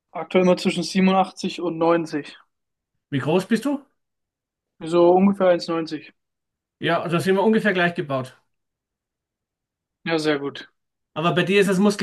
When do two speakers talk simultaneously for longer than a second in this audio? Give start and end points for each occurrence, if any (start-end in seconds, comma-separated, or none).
none